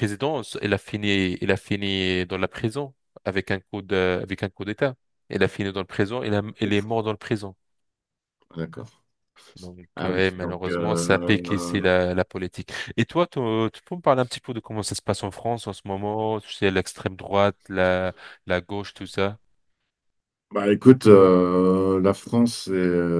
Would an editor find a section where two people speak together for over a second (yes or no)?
yes